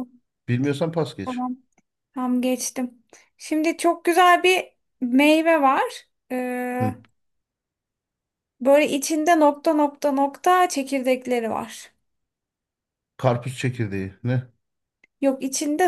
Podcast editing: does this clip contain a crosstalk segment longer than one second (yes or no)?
no